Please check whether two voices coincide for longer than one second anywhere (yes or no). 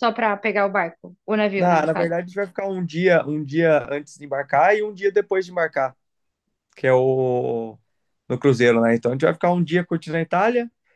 no